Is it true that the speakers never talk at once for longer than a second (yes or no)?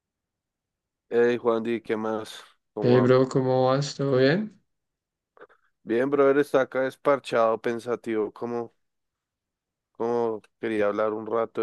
yes